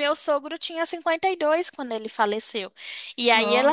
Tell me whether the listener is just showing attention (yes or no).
yes